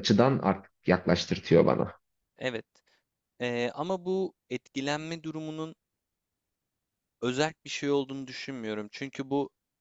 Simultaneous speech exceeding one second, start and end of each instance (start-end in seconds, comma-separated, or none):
none